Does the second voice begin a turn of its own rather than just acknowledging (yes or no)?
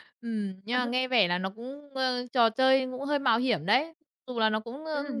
yes